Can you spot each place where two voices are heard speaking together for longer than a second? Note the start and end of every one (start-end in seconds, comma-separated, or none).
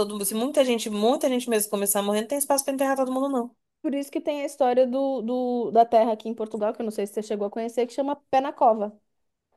none